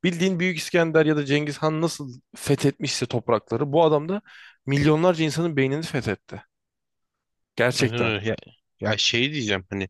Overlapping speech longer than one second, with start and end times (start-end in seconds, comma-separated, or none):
none